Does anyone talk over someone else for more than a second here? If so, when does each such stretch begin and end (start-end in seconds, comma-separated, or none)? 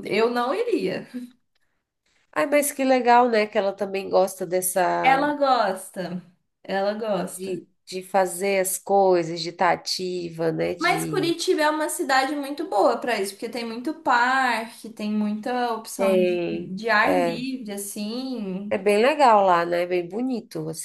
16.0-17.5